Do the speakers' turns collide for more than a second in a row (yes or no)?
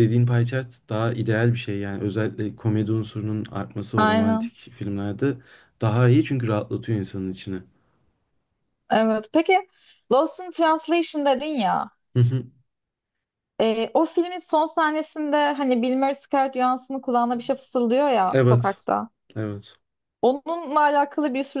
no